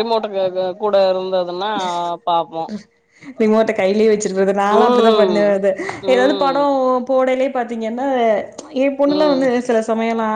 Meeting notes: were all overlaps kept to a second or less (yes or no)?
yes